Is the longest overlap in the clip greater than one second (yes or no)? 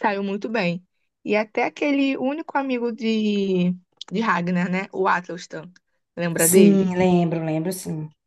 no